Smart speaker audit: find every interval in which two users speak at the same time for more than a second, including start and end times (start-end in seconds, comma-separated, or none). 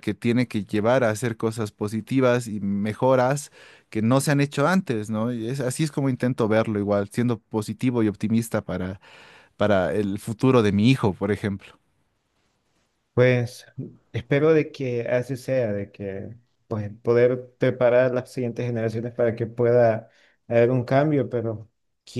none